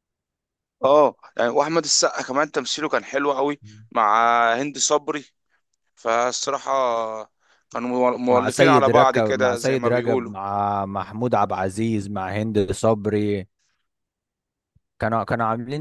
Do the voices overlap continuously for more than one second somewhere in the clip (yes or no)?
yes